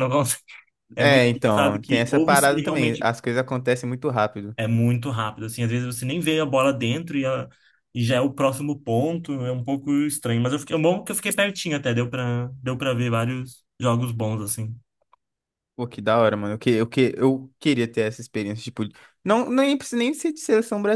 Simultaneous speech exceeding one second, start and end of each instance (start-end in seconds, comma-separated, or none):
1.0-3.1